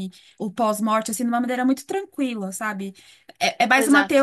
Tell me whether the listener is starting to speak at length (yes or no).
no